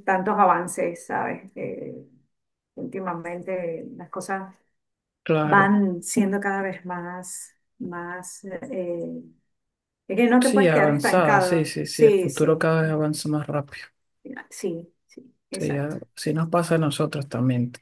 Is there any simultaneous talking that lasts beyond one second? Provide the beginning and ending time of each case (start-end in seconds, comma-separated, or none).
10.4-12.6